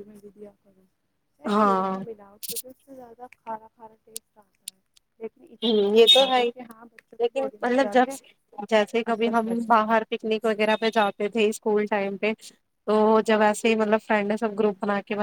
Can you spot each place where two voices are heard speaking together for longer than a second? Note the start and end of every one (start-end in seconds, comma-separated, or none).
5.6-8.1